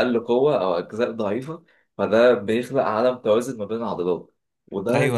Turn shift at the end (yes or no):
yes